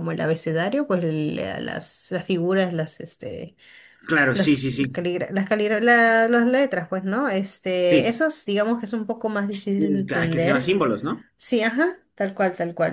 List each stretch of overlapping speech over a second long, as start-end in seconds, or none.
none